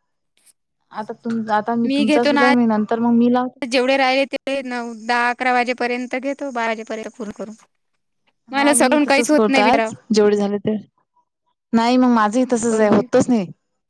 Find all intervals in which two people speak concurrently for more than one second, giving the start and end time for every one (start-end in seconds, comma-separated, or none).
none